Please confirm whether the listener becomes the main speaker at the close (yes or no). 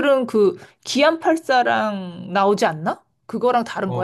yes